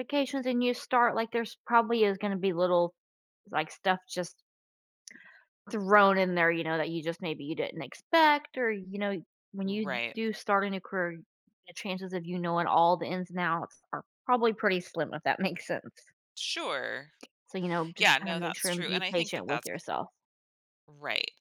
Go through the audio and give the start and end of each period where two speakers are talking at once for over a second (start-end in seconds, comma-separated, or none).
18.0-19.8